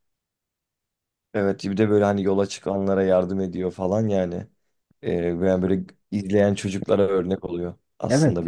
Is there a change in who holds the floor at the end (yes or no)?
yes